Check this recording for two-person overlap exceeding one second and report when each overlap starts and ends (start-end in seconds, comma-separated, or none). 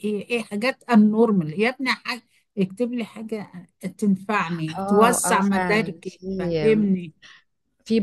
4.7-6.3